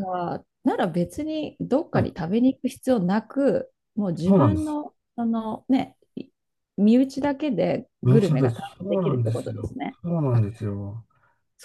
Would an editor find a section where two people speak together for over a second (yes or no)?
yes